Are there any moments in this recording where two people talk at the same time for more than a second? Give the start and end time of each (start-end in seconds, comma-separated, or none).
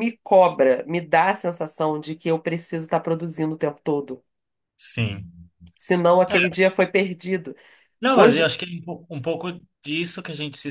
none